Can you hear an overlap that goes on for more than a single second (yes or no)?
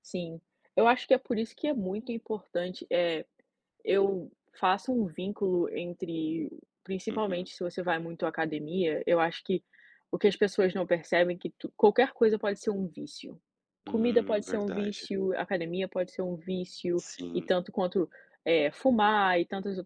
yes